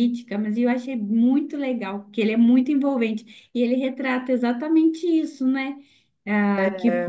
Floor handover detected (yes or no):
no